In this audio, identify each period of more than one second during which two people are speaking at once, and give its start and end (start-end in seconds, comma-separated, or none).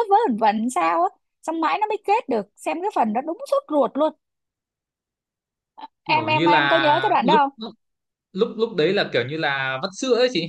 6.1-7.5